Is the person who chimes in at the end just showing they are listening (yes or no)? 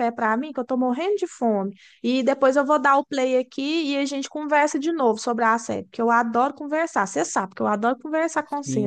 no